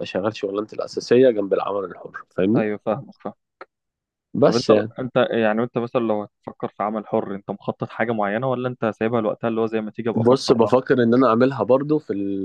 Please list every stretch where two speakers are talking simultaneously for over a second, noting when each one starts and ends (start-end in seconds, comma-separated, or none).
none